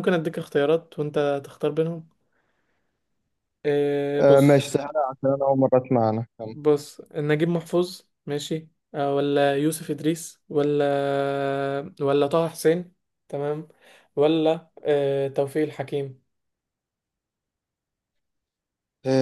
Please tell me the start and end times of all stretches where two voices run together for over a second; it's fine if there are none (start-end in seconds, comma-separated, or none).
none